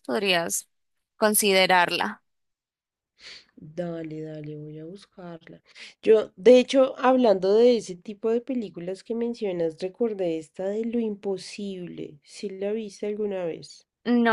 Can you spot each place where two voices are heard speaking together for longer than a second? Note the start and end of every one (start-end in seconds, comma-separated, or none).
none